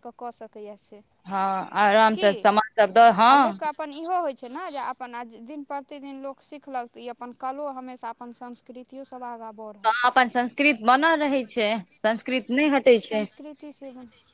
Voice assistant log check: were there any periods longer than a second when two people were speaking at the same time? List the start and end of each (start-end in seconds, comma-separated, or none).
none